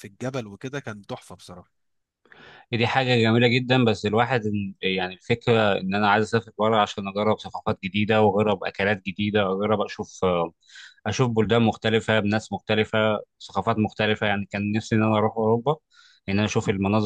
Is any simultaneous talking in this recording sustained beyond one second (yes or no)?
no